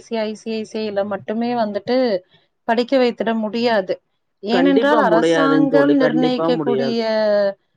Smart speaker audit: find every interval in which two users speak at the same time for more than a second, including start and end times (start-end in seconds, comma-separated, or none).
4.5-7.0